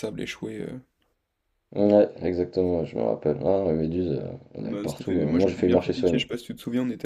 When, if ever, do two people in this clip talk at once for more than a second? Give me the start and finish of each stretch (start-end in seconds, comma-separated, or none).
4.7-6.2